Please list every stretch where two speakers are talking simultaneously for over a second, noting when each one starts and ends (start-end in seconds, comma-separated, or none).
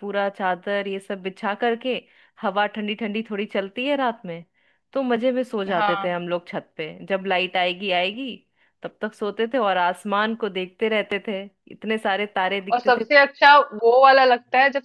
none